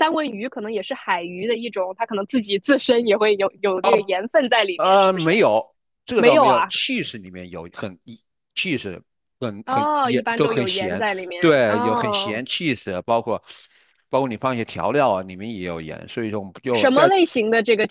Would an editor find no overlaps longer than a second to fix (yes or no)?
no